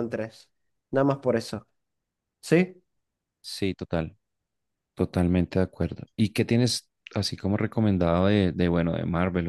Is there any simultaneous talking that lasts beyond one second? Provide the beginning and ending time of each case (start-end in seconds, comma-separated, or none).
none